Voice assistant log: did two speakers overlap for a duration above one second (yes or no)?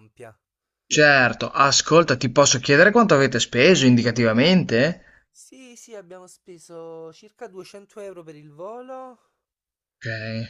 no